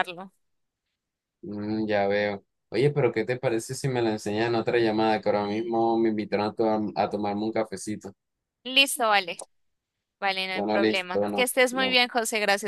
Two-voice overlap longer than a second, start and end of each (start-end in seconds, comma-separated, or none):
10.5-12.0